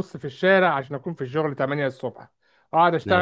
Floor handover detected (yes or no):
no